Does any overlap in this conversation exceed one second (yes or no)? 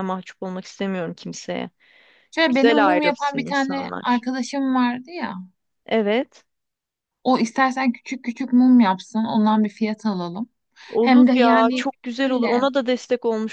yes